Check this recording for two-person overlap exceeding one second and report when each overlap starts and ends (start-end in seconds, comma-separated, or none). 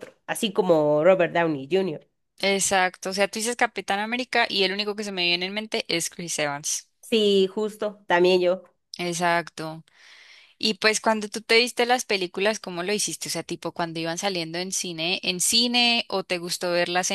none